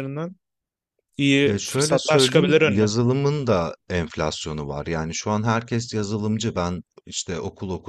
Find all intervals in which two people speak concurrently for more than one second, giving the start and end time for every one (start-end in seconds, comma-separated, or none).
1.4-2.9